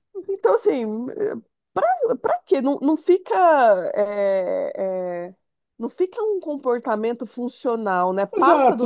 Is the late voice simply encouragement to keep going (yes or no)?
no